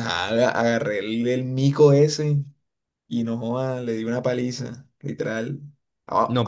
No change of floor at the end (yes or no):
no